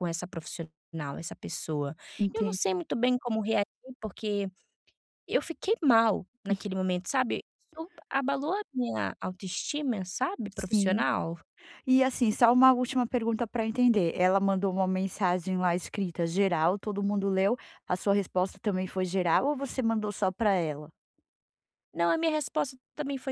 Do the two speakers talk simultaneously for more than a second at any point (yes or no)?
no